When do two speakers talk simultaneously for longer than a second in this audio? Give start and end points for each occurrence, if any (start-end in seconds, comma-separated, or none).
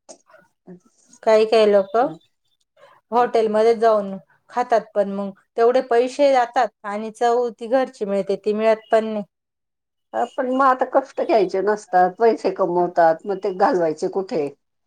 none